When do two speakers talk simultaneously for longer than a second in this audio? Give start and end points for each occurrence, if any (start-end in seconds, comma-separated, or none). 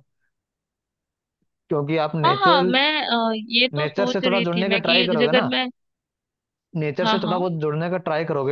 3.8-5.5